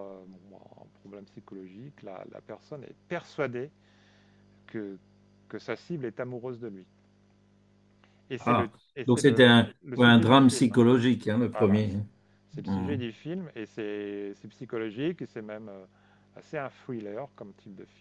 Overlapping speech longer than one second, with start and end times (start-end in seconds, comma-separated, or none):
8.4-10.8